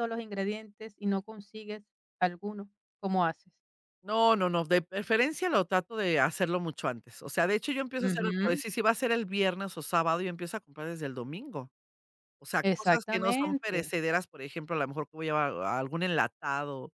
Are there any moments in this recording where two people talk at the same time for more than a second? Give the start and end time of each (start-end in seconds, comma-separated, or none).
12.6-13.9